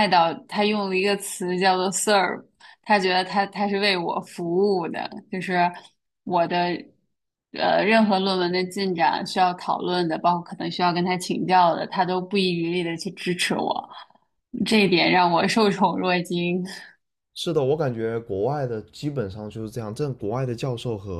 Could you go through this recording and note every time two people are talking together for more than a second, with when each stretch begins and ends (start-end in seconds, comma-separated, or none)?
none